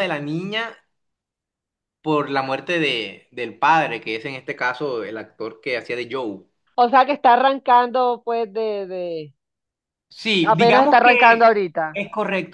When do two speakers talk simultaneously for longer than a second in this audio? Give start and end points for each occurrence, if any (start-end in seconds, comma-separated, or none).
10.4-12.0